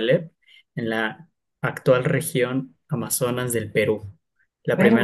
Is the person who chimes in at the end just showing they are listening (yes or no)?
yes